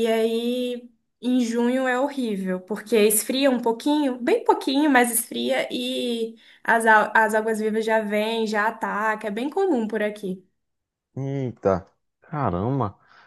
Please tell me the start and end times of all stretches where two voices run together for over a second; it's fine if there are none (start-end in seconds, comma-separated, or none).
none